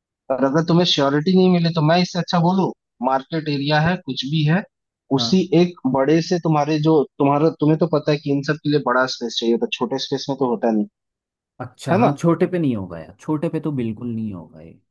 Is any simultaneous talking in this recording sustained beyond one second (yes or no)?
no